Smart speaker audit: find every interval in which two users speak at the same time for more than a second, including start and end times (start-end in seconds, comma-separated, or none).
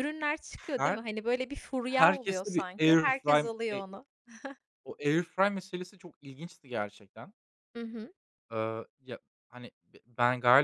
1.8-3.8